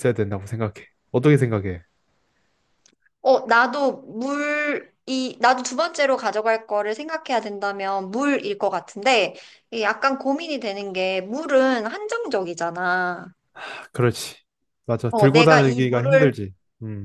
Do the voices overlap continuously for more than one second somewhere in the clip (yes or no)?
yes